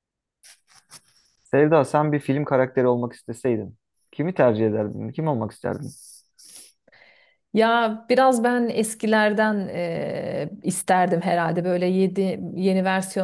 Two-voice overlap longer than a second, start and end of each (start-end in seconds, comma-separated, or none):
none